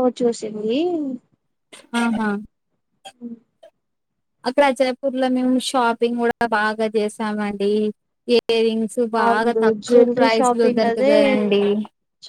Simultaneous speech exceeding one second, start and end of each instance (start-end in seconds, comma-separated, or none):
9.2-11.2